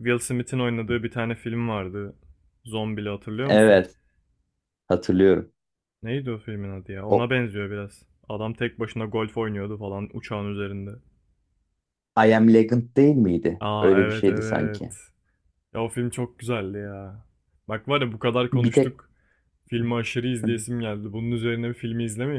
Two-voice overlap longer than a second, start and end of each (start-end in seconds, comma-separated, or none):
13.6-14.9